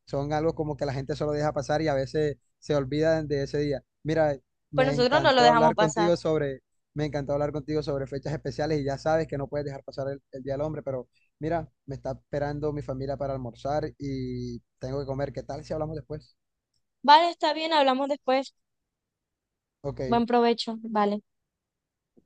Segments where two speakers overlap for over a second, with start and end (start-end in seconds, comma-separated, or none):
4.8-6.1